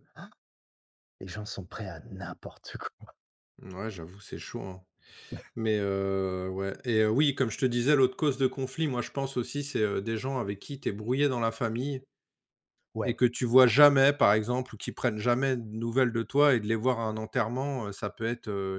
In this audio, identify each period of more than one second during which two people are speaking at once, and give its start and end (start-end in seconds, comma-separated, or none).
none